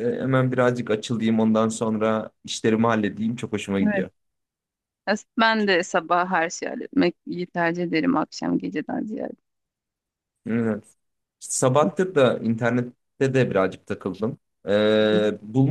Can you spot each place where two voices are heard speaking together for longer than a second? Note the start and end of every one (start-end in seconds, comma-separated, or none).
none